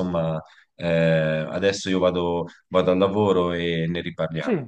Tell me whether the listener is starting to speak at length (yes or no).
yes